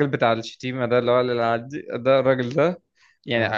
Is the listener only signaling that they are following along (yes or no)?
yes